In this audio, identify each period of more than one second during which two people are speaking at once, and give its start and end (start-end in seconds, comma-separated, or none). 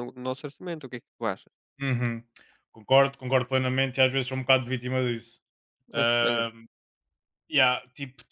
none